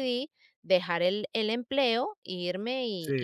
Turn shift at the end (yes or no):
no